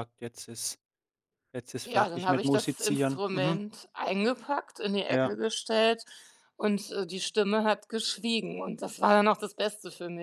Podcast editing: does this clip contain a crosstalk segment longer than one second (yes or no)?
yes